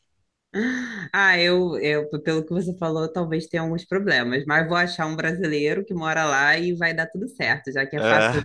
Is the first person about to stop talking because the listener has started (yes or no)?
no